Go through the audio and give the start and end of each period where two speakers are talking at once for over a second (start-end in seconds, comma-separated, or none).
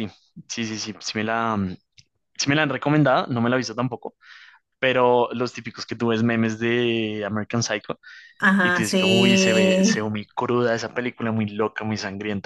8.6-10.2